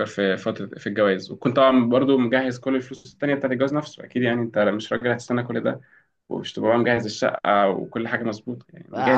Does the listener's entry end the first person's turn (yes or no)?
yes